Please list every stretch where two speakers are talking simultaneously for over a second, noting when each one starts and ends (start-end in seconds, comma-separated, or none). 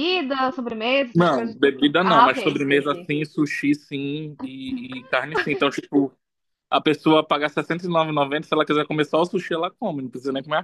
1.2-3.1